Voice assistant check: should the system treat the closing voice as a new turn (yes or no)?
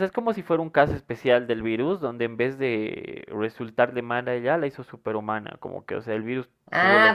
yes